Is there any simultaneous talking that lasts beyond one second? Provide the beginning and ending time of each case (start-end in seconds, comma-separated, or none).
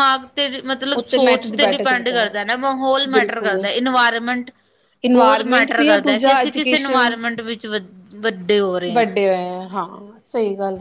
5.1-7.0